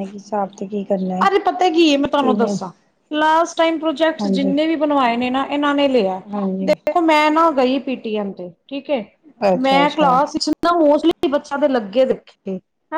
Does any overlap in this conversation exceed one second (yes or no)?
no